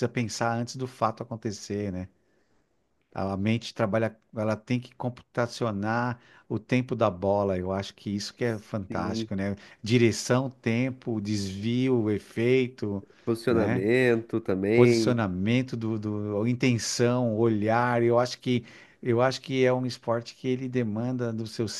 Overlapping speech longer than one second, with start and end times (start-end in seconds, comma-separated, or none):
none